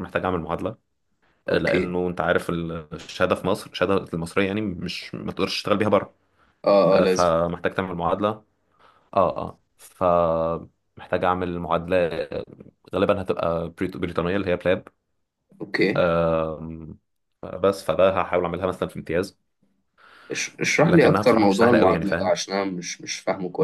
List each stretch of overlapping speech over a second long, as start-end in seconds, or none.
20.9-22.4